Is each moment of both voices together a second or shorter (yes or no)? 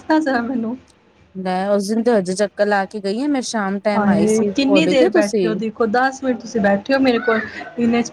no